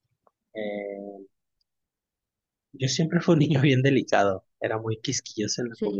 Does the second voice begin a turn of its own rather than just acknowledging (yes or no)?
no